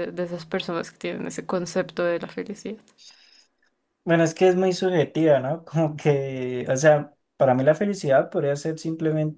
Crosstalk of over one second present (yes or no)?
no